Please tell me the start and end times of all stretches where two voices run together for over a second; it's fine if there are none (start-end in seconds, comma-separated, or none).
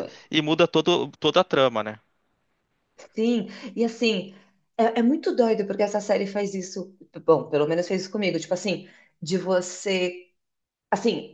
none